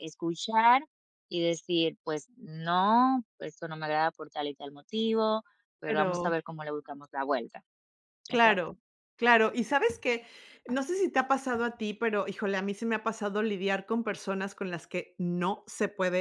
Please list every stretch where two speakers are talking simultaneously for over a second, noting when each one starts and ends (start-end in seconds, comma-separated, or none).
none